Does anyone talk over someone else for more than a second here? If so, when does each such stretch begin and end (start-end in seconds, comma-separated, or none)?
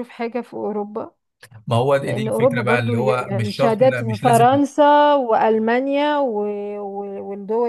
2.0-4.5